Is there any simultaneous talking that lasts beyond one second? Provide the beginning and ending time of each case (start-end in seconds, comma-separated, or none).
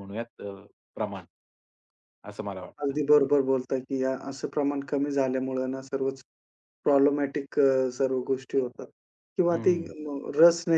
none